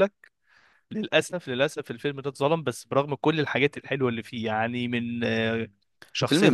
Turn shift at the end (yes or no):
no